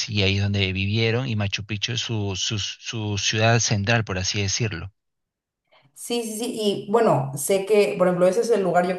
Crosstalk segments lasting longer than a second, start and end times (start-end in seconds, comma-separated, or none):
none